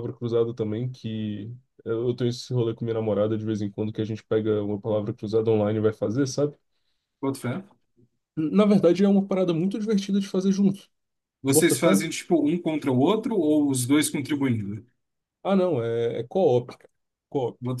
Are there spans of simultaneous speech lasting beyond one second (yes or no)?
no